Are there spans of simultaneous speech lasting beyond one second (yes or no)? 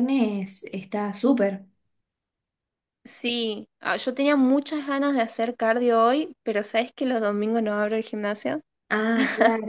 no